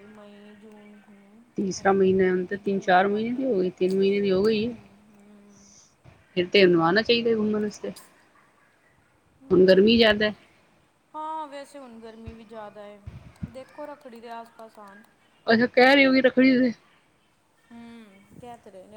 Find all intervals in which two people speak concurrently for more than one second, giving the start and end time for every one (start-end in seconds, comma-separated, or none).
1.6-3.5